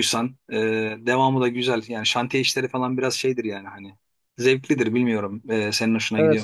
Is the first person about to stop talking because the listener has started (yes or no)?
yes